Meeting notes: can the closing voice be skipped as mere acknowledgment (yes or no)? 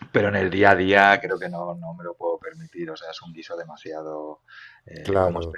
yes